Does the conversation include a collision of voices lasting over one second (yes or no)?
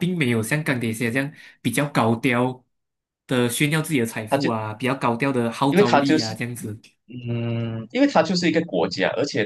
no